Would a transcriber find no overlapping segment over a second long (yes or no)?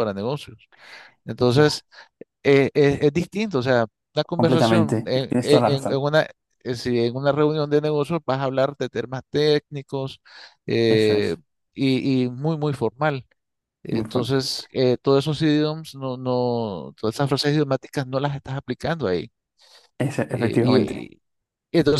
no